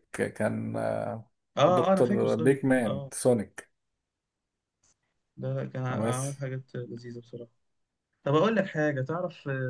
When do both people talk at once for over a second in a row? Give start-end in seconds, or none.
1.6-3.1